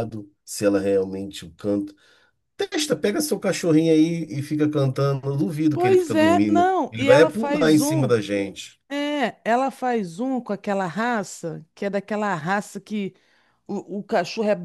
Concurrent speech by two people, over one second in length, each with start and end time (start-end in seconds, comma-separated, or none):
5.7-8.1